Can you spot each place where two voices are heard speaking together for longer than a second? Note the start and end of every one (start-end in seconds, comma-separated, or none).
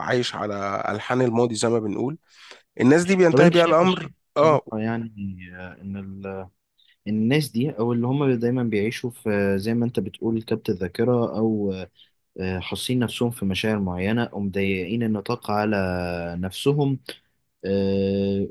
3.3-4.6